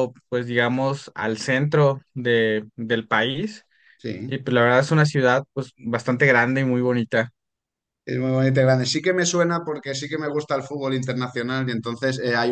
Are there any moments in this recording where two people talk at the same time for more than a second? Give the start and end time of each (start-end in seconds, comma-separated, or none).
none